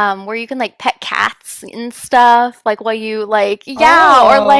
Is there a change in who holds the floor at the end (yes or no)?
no